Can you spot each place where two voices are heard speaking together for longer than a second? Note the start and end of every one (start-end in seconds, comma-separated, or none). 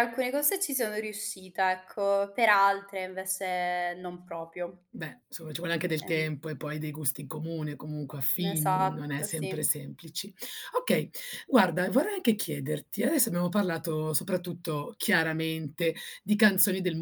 8.4-9.7